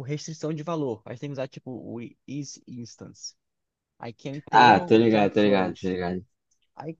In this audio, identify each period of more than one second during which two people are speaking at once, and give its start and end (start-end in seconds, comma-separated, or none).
4.5-6.0